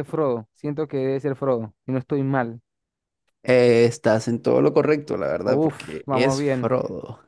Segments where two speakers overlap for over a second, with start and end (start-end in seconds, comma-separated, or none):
5.4-6.7